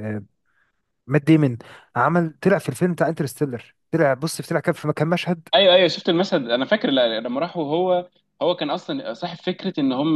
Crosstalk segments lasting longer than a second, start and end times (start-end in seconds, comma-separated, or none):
none